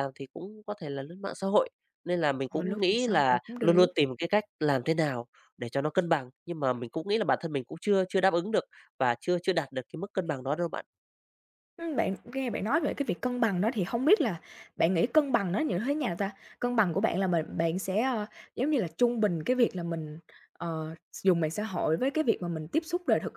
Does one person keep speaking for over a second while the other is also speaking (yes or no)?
yes